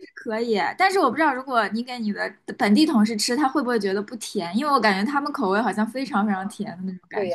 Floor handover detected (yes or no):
yes